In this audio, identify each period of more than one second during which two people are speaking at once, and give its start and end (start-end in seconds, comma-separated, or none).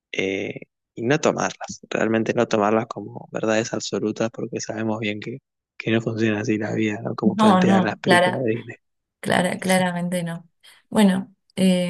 7.2-8.5